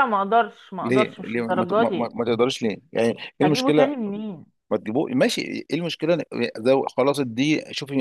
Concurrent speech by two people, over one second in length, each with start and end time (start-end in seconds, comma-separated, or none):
0.8-2.1